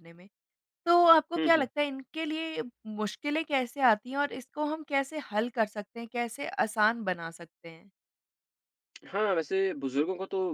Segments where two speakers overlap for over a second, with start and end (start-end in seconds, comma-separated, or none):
none